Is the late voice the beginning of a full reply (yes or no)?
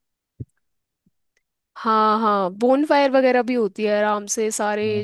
yes